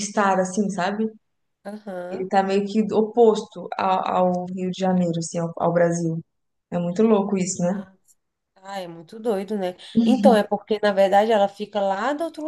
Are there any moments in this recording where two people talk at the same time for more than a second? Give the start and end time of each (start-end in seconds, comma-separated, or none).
none